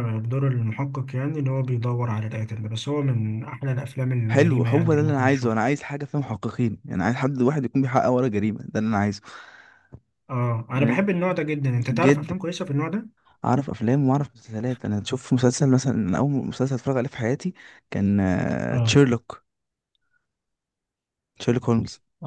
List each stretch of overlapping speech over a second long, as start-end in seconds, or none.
4.3-5.6